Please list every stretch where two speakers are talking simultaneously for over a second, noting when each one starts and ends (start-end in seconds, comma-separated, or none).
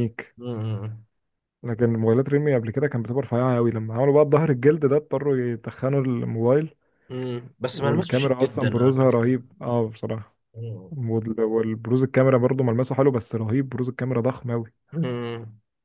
7.7-9.2